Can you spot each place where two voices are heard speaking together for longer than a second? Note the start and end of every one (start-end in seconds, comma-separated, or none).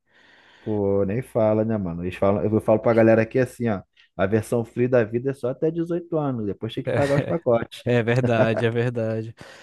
none